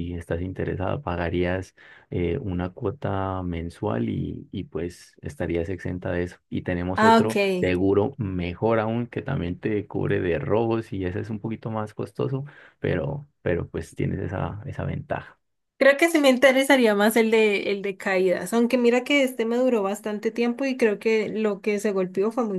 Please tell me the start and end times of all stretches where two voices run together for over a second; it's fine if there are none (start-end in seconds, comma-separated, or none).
none